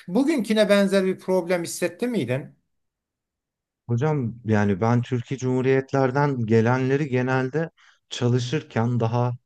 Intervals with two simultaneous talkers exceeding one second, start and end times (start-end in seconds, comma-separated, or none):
none